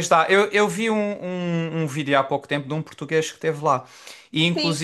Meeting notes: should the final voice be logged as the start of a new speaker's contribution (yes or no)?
yes